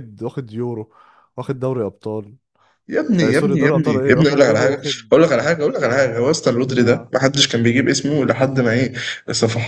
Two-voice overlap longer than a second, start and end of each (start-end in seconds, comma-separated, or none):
3.2-5.1